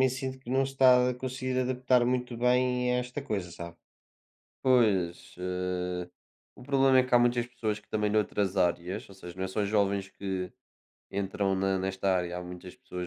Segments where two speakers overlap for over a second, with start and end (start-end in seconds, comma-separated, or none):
none